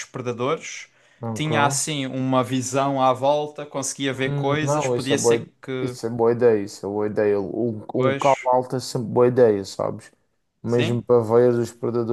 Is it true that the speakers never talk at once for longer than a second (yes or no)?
no